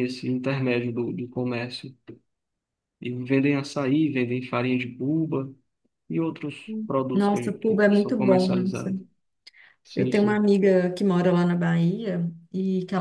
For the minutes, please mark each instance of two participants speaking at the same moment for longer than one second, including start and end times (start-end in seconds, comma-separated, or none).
6.7-8.9